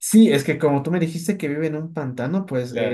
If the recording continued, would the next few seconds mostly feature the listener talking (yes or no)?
no